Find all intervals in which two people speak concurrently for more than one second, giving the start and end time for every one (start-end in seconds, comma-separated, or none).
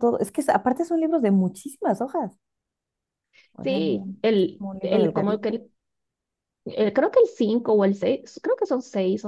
3.6-5.6